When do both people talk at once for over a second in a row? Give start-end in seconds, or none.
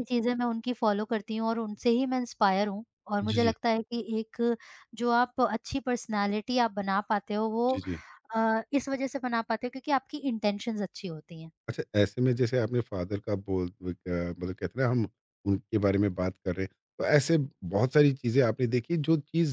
none